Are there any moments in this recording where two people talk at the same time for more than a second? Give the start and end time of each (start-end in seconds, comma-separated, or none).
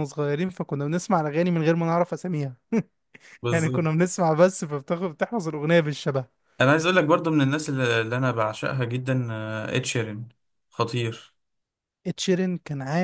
none